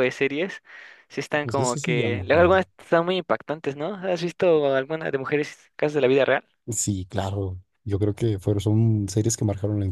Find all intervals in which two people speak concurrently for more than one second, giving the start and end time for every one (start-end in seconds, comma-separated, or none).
1.4-2.6